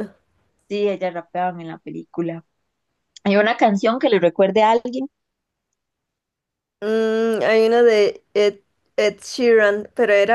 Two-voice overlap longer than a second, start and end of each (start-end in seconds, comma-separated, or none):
none